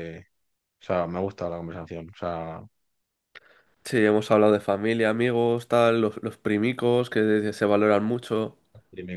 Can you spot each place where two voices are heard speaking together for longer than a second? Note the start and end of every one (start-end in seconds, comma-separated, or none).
none